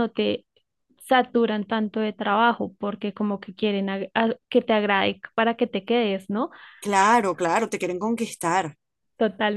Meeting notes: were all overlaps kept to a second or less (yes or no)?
yes